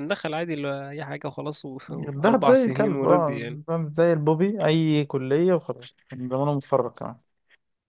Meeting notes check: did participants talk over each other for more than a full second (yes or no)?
yes